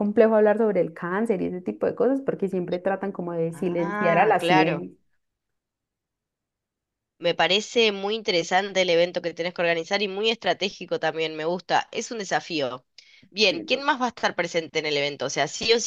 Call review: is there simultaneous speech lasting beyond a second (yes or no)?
yes